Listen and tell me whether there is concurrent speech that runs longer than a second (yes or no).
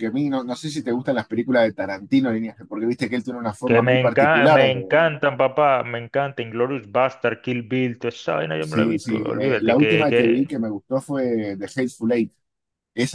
yes